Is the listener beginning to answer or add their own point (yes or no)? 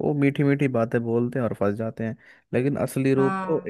no